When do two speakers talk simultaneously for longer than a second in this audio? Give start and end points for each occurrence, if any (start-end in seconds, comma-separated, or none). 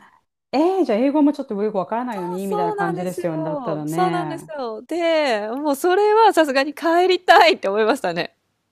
2.4-4.5